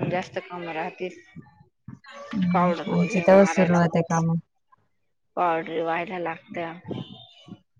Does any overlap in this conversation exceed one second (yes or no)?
yes